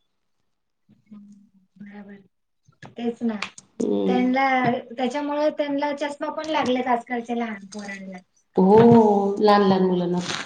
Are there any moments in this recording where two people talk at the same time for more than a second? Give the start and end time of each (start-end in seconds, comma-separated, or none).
none